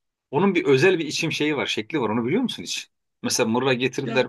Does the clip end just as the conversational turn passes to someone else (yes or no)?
no